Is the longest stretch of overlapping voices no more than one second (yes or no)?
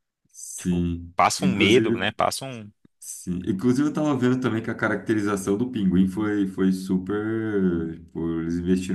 no